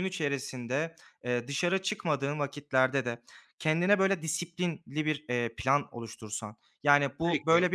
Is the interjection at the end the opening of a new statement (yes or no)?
no